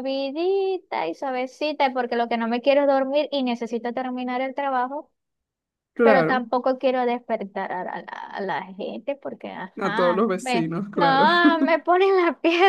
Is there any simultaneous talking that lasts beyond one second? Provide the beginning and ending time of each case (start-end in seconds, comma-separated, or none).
9.8-11.3